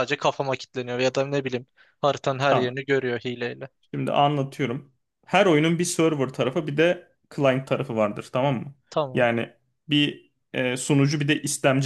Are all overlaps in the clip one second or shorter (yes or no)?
yes